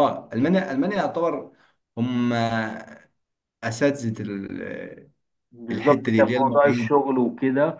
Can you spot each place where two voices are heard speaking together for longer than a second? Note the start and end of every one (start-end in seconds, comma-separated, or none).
5.7-6.9